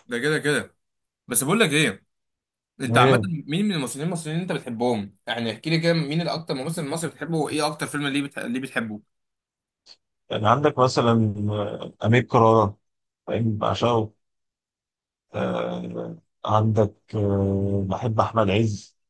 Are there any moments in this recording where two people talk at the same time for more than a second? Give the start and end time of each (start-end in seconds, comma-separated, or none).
none